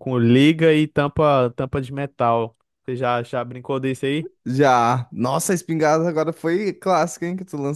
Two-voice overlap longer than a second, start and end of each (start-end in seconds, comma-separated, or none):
none